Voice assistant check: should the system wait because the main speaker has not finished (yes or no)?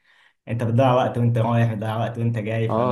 no